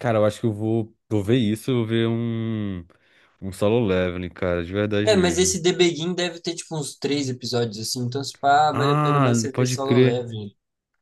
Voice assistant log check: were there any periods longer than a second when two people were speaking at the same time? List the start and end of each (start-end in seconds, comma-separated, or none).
8.7-10.3